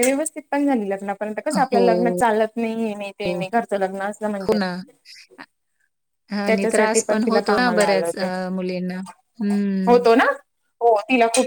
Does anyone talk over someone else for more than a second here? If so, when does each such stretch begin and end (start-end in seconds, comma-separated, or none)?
6.5-8.1